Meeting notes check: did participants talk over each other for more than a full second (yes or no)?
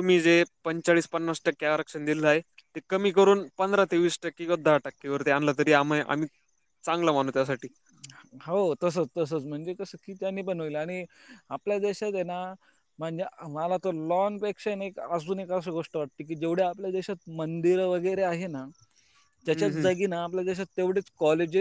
no